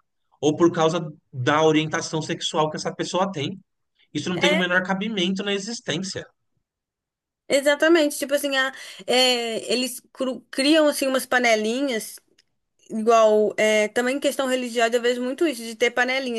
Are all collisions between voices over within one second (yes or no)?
yes